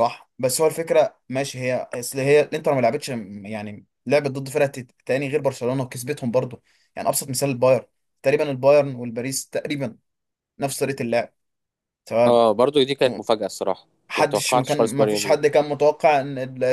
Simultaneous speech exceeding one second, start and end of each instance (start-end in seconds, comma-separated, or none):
14.1-15.4